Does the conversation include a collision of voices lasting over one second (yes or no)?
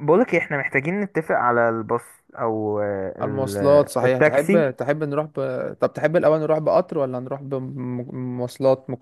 yes